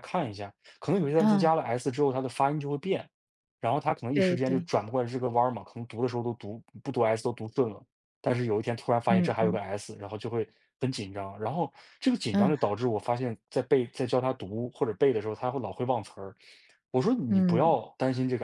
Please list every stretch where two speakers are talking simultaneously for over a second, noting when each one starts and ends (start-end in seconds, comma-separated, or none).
none